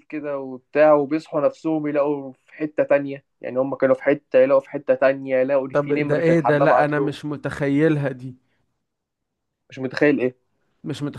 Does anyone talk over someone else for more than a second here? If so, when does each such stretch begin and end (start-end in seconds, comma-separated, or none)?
5.7-7.2